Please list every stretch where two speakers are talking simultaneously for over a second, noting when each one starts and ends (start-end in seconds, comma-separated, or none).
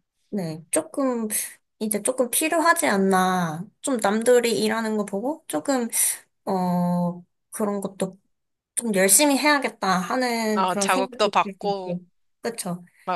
10.5-12.0